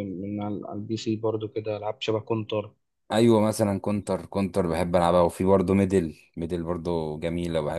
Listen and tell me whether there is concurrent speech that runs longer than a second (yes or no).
no